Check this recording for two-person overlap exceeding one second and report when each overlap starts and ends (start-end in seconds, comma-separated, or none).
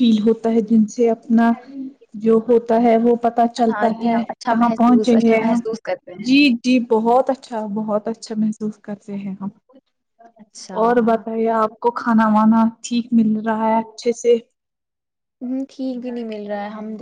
3.7-5.6